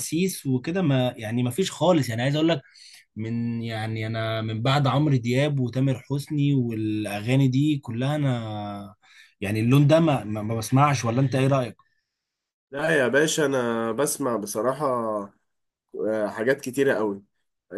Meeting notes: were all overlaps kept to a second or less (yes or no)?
yes